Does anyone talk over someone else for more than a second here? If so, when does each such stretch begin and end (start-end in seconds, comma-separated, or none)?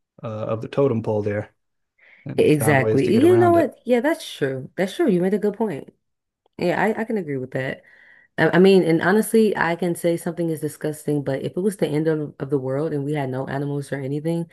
2.4-3.7